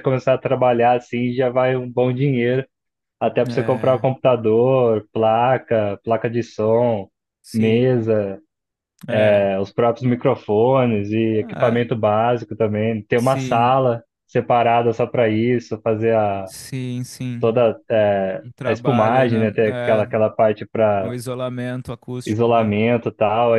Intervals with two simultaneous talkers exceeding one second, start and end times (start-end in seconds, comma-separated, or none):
18.4-20.1